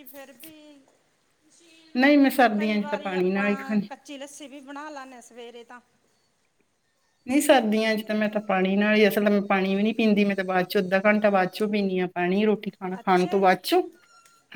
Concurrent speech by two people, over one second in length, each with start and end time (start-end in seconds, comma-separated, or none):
2.6-3.9